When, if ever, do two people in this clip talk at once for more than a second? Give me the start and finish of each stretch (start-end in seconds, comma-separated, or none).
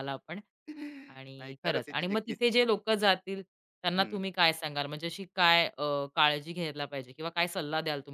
1.1-2.4